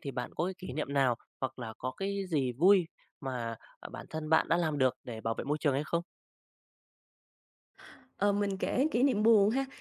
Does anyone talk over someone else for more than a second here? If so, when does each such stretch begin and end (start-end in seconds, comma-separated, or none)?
none